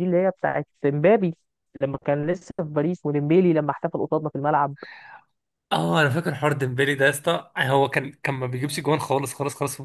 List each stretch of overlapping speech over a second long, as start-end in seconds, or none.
none